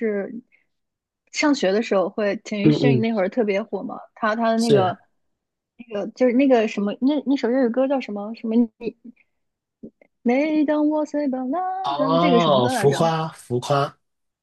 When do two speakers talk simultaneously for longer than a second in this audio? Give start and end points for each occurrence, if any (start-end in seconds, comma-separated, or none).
11.8-13.1